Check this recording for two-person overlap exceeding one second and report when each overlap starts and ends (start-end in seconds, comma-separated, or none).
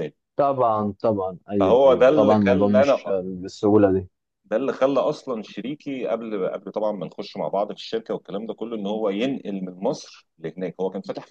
1.6-2.9